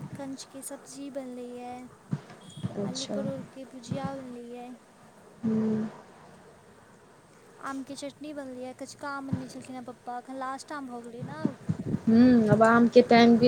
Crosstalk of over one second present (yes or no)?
no